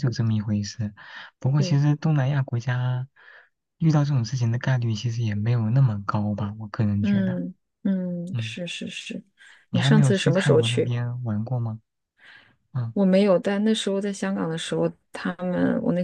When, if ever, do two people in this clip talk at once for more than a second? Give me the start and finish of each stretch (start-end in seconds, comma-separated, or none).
9.7-10.9